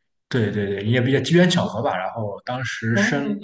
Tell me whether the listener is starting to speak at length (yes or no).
no